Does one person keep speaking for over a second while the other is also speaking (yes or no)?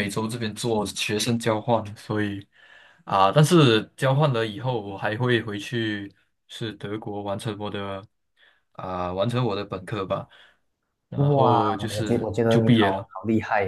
yes